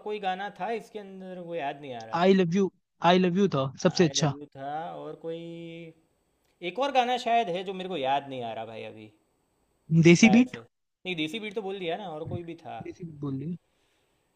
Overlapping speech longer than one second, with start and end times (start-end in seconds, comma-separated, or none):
none